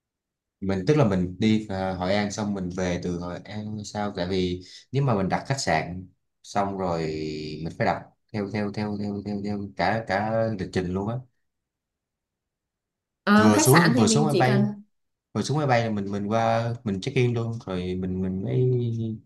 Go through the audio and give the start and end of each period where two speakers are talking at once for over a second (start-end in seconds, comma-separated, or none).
13.4-14.7